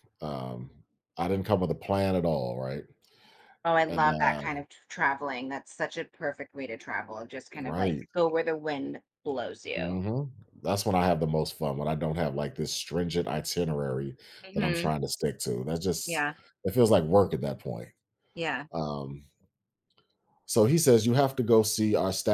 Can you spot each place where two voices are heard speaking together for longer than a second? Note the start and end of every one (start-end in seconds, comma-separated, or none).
none